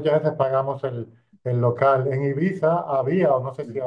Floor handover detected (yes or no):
no